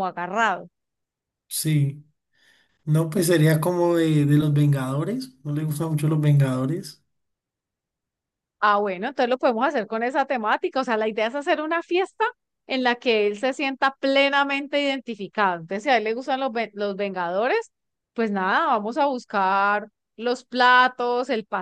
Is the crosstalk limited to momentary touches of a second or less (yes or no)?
yes